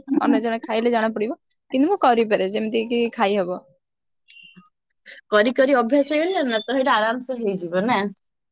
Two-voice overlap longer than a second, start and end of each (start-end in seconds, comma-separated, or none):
none